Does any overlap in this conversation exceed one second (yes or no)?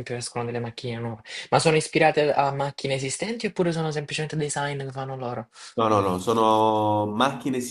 no